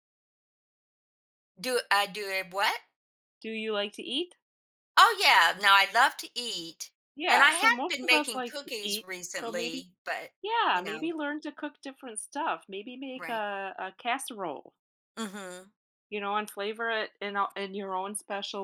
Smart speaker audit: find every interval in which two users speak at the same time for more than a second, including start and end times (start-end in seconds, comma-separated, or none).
7.3-9.9